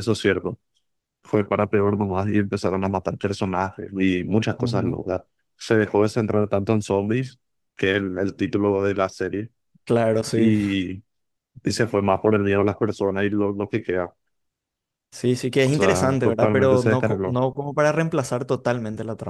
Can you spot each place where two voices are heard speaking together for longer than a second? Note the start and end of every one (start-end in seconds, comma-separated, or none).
15.6-17.4